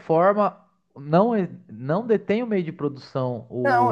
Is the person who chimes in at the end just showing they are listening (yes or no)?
no